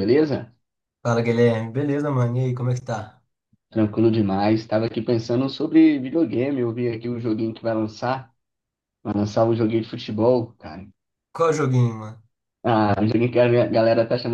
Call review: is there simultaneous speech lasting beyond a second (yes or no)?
no